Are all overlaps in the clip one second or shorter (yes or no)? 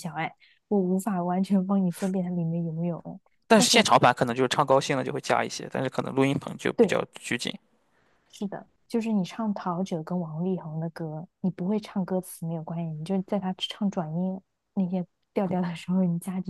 yes